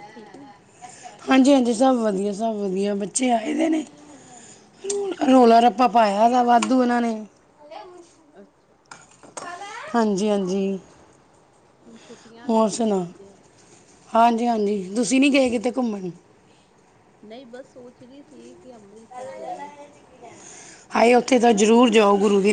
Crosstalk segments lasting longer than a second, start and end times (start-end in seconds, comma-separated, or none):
none